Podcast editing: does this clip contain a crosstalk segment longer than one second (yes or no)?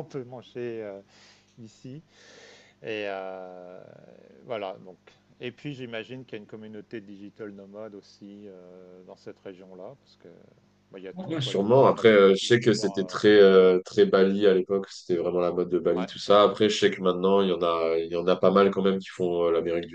yes